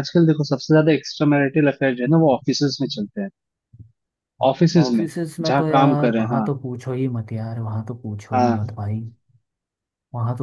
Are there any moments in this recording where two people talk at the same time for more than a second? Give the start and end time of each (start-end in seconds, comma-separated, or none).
4.8-6.5